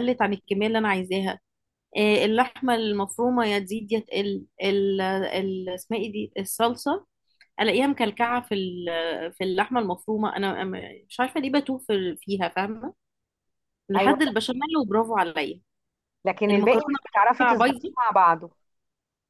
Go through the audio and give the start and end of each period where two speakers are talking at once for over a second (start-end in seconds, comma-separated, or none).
16.5-17.9